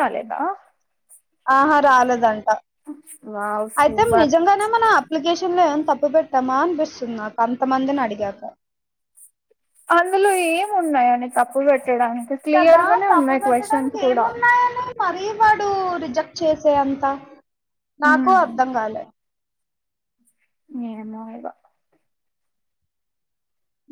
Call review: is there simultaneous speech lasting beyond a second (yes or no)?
yes